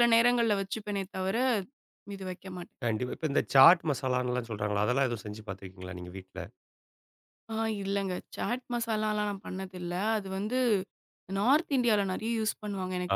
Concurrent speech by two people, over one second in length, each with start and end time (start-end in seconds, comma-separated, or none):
none